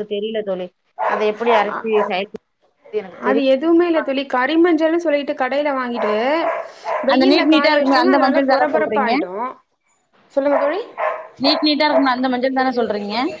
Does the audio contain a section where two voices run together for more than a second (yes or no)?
yes